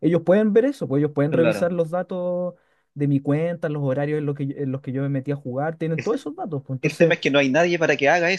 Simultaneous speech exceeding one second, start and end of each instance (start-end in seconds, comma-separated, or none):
none